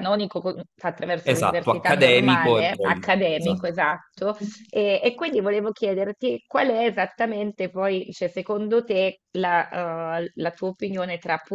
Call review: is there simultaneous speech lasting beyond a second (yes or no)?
yes